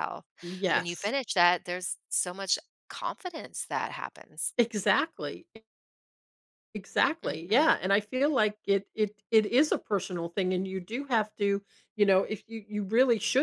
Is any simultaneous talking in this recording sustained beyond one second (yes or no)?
no